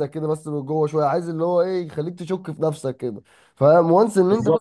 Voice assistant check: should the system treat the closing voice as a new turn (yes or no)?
no